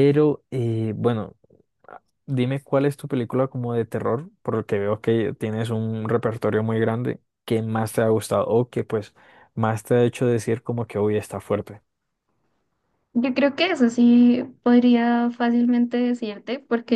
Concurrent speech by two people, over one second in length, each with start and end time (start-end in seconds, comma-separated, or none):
none